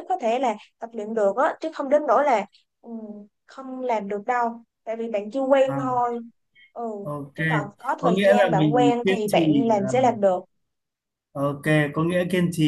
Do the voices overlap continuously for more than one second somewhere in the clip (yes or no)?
yes